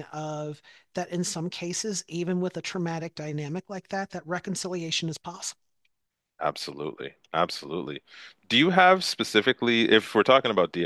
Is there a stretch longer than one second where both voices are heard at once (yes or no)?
no